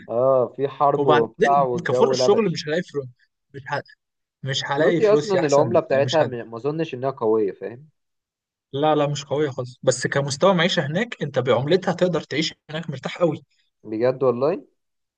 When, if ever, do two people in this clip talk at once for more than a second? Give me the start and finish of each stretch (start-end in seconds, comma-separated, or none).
1.0-2.7, 4.8-6.3